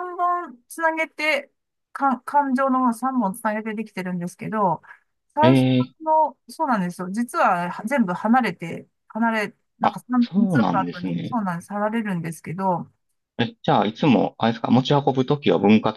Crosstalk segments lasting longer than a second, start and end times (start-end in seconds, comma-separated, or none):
9.8-11.4